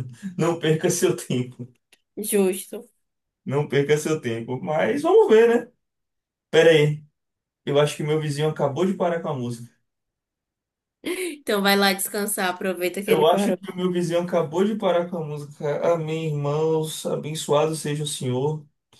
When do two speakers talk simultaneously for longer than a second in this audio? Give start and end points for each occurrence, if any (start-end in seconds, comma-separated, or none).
none